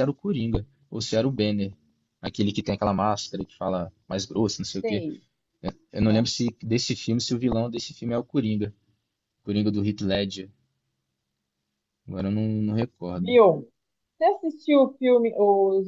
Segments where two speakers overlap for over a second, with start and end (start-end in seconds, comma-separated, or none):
none